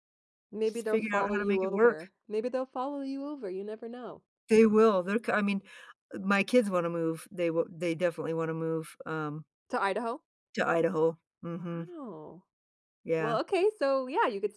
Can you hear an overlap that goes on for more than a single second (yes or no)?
yes